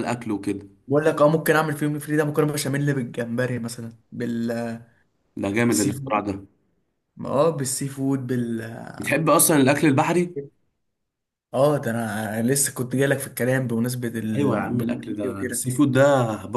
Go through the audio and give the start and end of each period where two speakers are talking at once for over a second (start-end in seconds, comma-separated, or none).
14.3-15.7